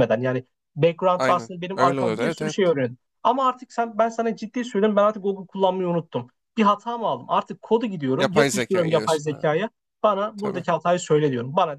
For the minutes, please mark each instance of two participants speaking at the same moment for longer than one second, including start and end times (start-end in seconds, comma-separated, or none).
1.2-2.6, 8.2-9.5